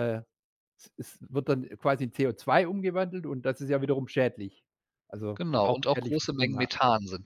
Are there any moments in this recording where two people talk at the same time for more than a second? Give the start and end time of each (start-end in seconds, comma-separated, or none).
5.3-6.7